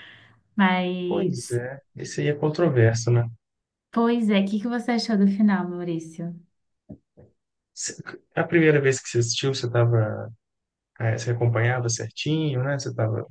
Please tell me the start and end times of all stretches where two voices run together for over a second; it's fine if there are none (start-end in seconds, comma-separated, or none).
none